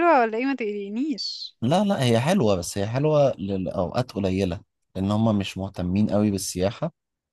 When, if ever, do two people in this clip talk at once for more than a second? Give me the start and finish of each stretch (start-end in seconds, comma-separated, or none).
none